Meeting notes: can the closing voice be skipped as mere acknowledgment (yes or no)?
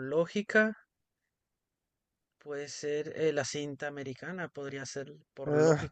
no